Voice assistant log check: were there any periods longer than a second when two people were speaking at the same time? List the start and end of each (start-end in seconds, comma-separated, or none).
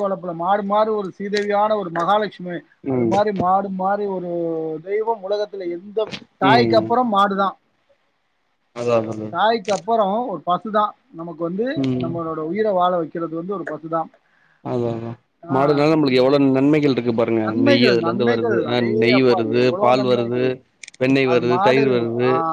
17.5-20.4